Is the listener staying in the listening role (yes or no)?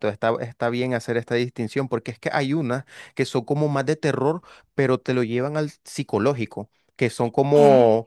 yes